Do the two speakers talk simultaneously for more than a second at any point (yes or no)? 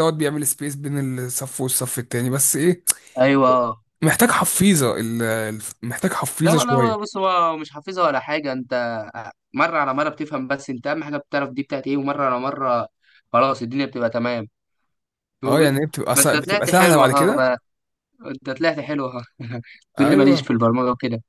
yes